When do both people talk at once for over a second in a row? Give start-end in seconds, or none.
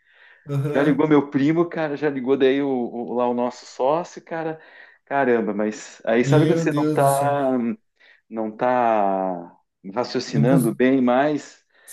6.2-7.5